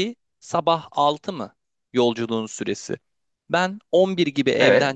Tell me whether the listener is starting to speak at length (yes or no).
no